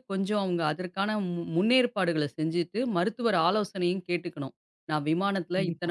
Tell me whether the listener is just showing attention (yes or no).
yes